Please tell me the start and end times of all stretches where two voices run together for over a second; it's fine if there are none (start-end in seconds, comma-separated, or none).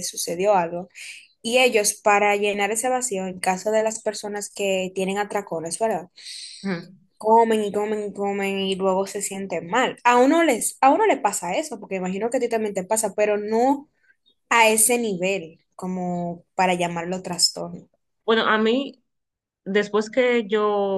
none